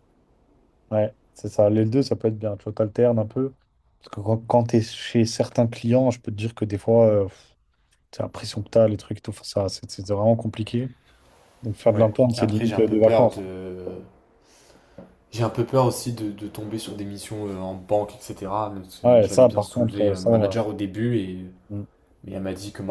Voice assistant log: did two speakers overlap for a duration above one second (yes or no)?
yes